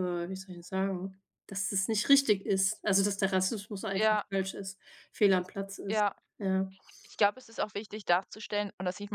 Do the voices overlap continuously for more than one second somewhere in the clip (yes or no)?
no